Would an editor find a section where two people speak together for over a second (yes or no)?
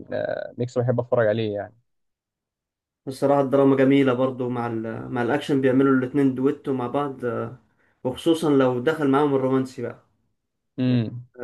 no